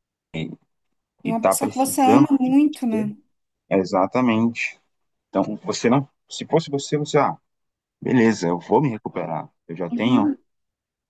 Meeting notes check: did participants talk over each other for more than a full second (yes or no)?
yes